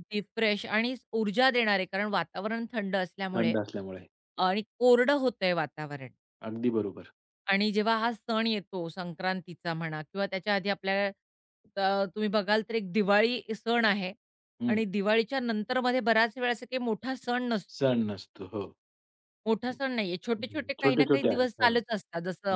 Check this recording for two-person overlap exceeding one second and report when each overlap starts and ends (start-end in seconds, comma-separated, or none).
20.4-21.7